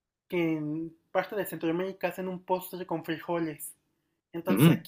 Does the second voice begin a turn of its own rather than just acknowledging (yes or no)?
no